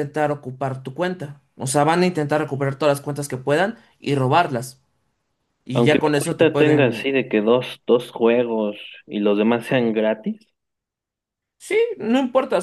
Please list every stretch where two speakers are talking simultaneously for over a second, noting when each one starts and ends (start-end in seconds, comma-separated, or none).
5.7-7.1